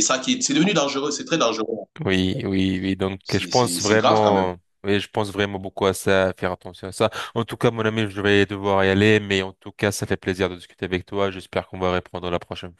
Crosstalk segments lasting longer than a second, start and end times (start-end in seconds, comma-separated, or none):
3.2-4.5